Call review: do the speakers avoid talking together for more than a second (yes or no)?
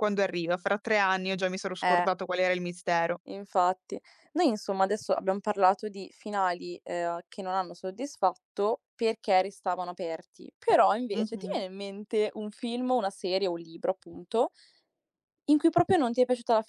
yes